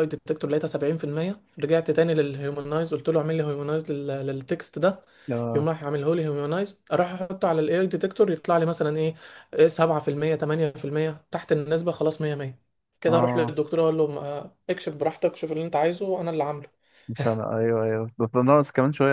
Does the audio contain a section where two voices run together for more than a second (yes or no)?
no